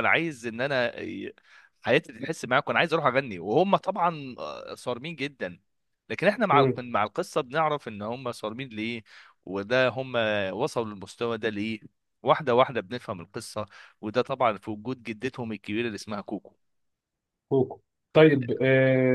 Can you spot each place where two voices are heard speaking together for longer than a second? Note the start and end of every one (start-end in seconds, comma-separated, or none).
none